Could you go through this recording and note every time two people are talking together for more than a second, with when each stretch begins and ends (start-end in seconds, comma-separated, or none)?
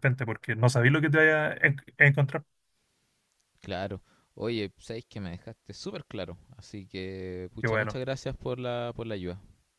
none